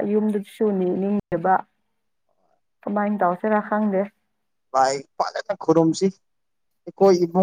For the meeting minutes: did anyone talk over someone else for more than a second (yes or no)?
no